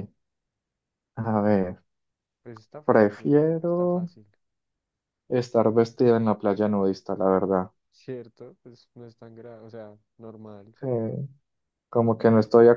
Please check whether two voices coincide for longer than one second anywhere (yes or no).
yes